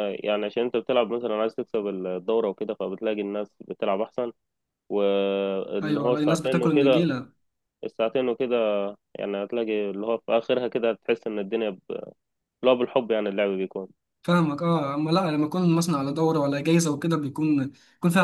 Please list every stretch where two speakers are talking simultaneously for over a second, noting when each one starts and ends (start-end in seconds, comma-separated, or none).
5.8-7.1